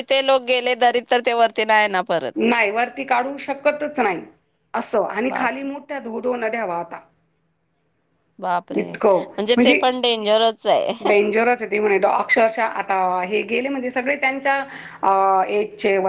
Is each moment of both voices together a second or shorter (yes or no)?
yes